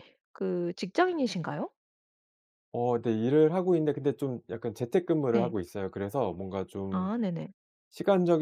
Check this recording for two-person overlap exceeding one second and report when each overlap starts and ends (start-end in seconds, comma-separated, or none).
none